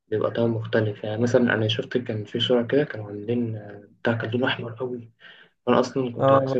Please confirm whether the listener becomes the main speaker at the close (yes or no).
no